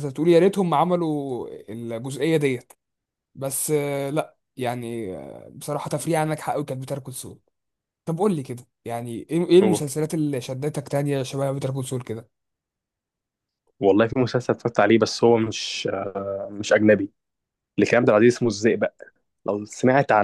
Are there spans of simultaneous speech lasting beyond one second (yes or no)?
no